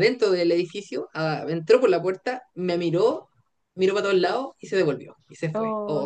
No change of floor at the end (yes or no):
no